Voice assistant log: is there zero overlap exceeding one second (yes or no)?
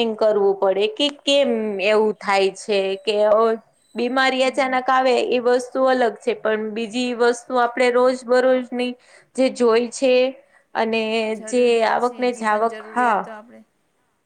yes